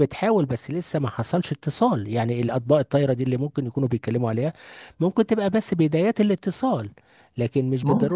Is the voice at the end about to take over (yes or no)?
no